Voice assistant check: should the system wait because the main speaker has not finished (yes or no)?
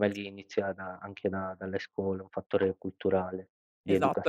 no